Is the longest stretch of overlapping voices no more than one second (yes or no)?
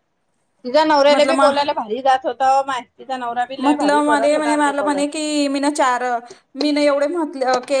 no